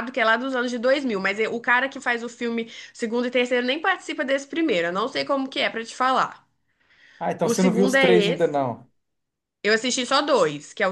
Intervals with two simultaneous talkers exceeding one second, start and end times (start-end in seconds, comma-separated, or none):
7.4-8.7